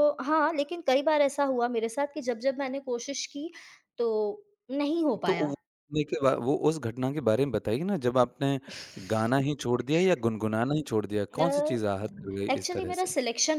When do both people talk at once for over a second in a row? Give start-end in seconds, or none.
none